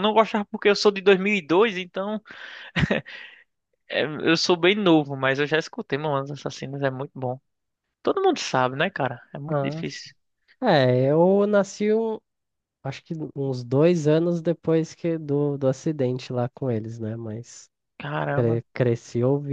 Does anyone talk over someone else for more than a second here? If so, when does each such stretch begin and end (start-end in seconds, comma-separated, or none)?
none